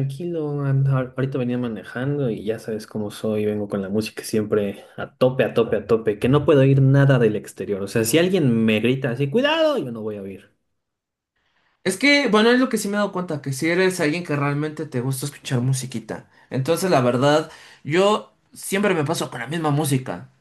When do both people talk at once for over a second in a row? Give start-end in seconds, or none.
none